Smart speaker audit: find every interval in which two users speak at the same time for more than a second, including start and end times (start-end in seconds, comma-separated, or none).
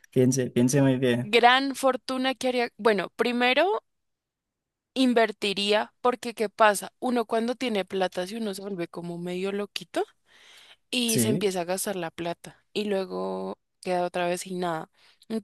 none